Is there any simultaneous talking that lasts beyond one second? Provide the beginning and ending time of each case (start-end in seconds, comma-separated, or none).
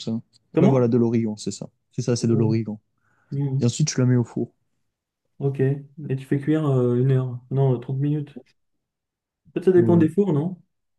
none